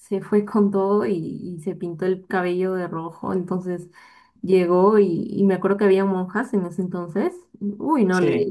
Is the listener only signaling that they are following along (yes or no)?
yes